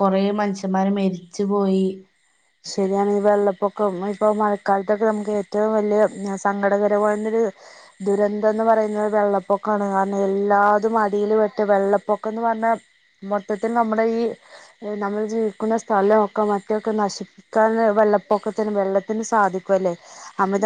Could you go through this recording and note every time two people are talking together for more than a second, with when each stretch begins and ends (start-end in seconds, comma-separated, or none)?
none